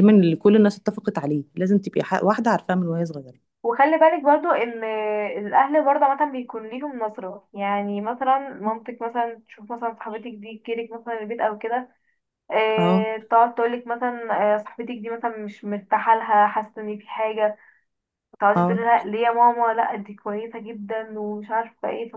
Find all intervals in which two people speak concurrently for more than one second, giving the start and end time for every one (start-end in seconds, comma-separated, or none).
none